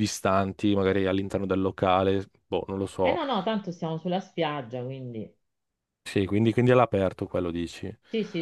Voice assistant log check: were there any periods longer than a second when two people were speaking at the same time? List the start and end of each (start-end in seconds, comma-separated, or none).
none